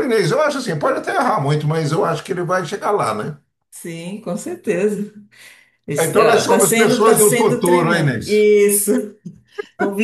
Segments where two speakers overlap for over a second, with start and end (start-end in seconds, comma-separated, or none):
6.0-8.4